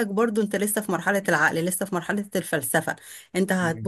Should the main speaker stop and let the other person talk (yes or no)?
no